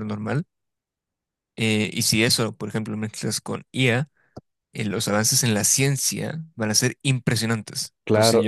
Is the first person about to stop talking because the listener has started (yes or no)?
yes